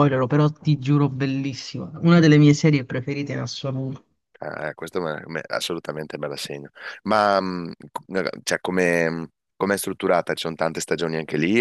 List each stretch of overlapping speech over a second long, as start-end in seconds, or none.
none